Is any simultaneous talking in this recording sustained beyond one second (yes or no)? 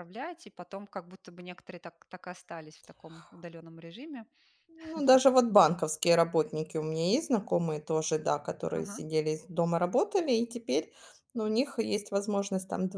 no